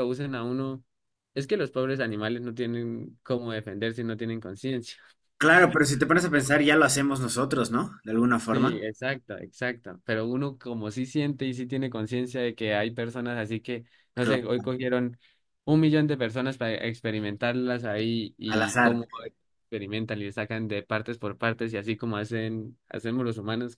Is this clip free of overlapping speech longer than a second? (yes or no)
yes